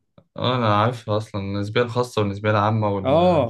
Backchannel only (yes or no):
no